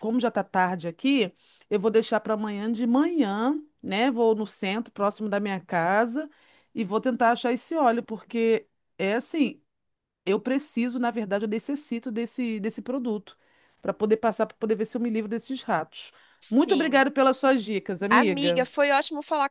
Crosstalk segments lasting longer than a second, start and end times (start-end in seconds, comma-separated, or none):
none